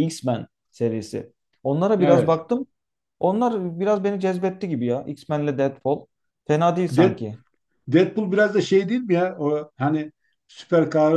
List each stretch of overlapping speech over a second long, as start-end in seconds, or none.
none